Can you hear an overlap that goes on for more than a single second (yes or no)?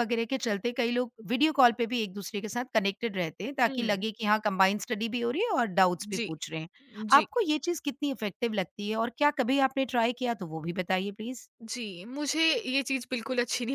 no